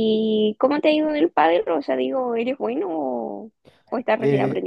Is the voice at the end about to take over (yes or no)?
yes